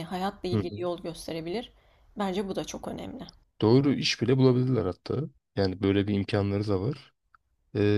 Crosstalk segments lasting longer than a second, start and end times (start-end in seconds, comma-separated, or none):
none